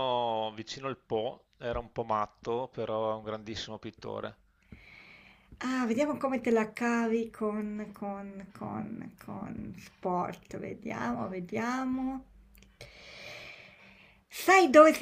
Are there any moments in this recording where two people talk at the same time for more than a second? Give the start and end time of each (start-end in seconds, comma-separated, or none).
none